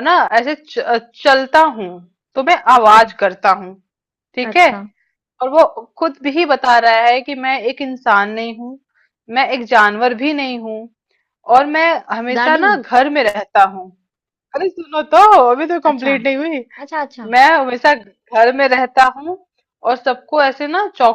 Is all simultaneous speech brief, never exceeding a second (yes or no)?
yes